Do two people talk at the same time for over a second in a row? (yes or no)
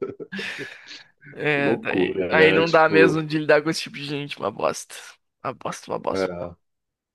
yes